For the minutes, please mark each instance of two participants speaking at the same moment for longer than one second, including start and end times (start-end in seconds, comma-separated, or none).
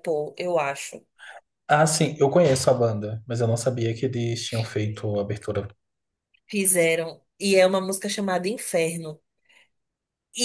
none